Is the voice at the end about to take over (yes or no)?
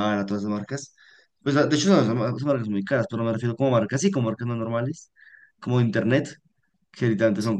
no